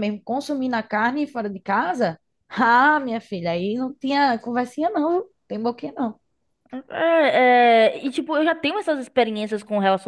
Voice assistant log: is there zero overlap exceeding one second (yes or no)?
yes